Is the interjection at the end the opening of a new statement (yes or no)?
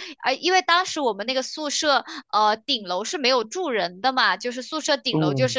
no